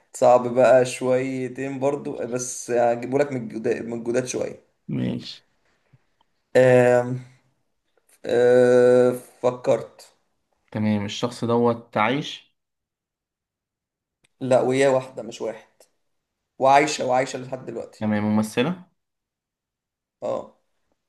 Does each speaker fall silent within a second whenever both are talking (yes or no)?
yes